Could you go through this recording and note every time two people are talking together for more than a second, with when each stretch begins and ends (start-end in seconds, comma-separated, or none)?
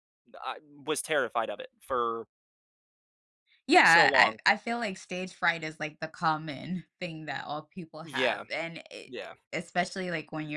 none